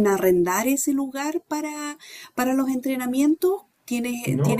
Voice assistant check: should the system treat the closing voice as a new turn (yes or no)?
yes